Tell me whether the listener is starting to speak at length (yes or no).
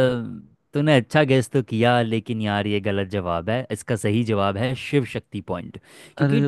no